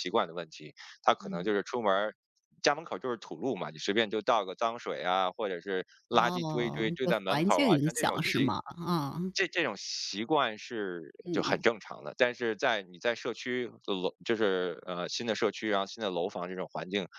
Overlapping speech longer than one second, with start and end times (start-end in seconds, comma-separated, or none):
6.1-8.5